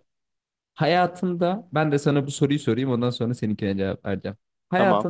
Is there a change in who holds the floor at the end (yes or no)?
no